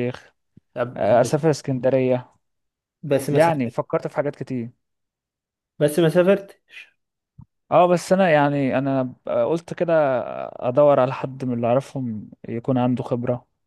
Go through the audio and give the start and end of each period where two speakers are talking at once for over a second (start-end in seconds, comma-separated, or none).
none